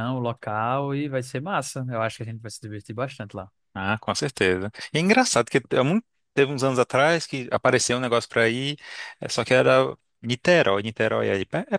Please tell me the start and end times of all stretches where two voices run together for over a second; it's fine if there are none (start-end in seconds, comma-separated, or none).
none